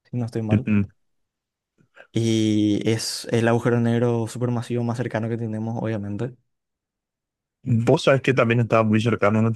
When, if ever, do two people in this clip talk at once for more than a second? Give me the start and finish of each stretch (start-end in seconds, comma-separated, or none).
none